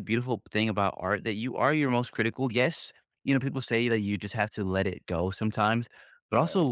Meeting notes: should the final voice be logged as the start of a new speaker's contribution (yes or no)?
no